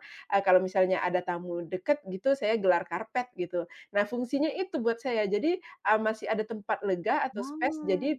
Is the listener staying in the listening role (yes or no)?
yes